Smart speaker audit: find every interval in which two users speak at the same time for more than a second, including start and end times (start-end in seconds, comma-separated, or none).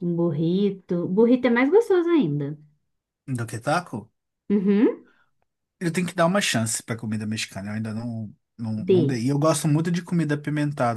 none